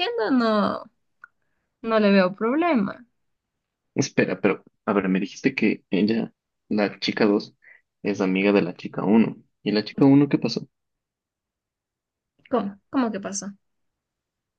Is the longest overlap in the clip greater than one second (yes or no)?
no